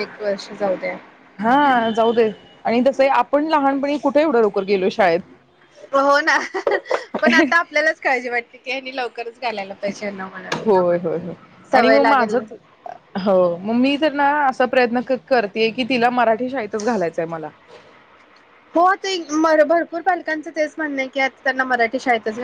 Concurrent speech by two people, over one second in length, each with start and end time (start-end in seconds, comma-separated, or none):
none